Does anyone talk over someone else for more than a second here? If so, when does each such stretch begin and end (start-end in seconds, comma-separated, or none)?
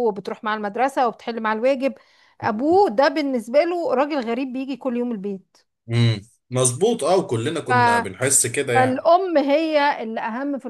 none